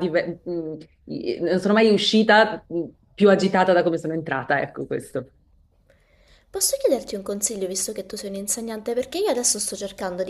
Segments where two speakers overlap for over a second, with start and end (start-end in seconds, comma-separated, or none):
none